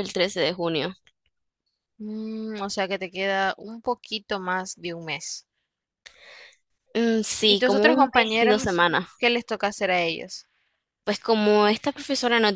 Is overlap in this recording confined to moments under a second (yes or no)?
no